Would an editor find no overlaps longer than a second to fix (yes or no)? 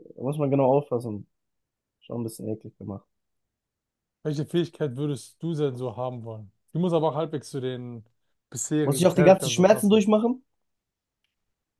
no